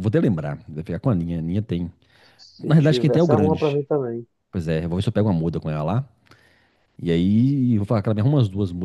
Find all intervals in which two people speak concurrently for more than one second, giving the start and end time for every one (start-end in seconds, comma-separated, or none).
2.6-3.8